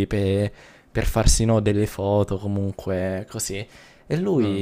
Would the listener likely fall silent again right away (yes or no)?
yes